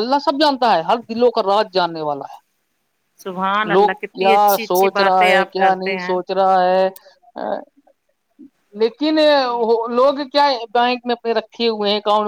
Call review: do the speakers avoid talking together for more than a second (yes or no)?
no